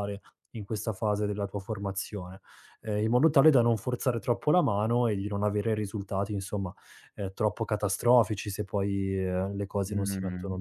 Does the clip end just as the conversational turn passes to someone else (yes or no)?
yes